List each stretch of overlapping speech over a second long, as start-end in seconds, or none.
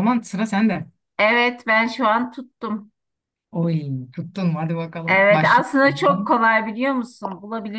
5.1-6.3